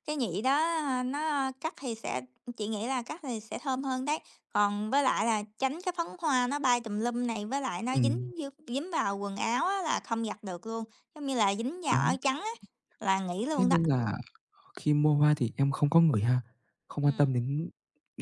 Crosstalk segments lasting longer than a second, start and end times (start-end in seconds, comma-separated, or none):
none